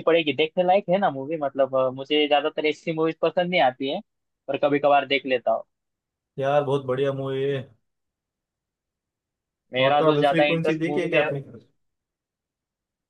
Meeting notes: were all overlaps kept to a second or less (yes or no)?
no